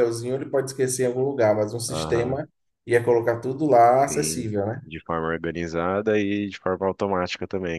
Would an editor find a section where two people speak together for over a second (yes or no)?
no